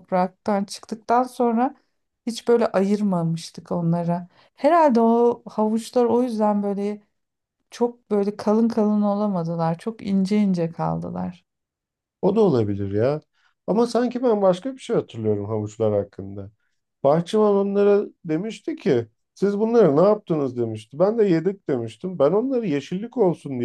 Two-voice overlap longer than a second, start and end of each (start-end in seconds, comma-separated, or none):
none